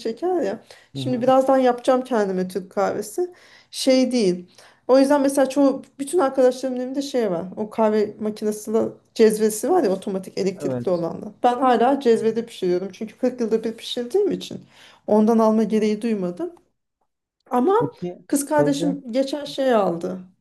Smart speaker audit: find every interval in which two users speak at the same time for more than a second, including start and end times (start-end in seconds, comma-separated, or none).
none